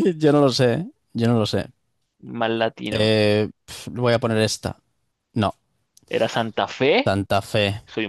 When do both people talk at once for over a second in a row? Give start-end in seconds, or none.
none